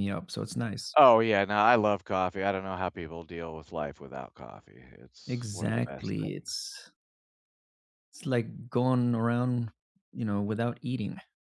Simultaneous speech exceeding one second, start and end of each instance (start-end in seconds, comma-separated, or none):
5.3-6.6